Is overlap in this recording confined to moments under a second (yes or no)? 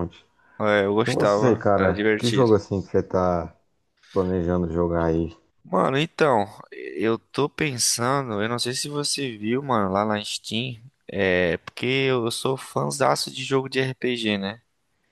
no